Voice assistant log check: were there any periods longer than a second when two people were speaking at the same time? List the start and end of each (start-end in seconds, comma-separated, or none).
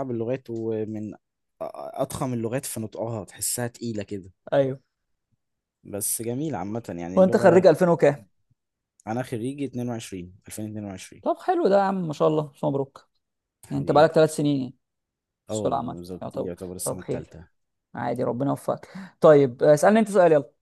15.5-17.3